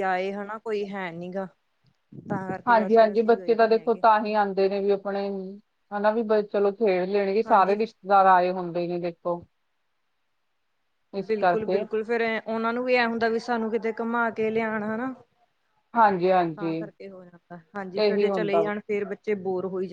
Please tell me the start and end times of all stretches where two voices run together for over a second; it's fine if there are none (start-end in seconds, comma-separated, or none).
2.7-4.0